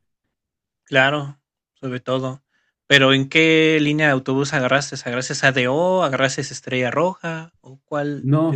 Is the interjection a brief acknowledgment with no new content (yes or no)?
no